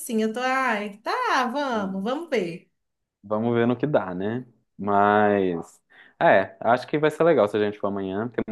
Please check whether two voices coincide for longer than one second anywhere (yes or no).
no